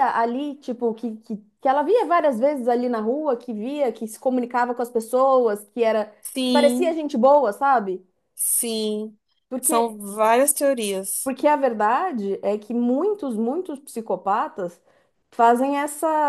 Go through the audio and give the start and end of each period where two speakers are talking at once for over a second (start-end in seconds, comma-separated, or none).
none